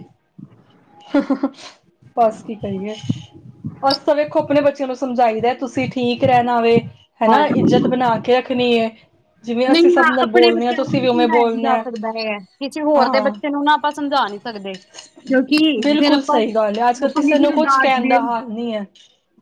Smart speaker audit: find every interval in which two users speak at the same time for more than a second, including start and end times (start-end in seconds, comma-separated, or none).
9.7-11.8